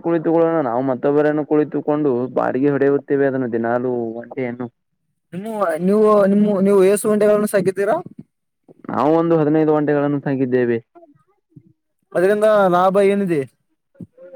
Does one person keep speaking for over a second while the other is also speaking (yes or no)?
no